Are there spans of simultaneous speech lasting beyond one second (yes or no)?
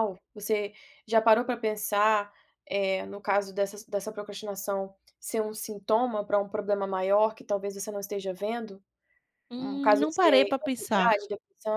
yes